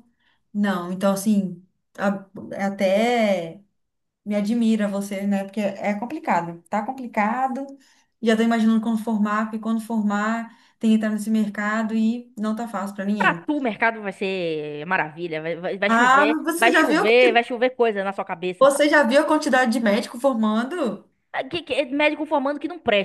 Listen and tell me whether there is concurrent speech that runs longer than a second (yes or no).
yes